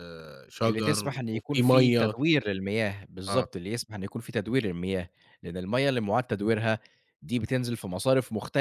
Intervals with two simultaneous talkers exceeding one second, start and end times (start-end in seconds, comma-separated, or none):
0.7-2.1